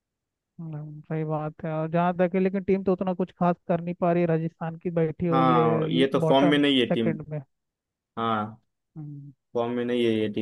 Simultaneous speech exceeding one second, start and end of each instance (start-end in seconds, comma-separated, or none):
5.3-7.1